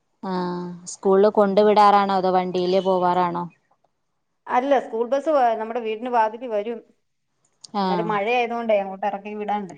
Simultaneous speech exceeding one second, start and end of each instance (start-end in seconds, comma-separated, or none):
none